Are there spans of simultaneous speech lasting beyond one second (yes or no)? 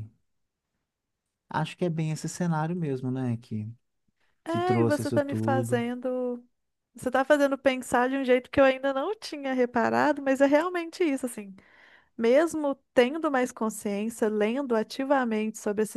yes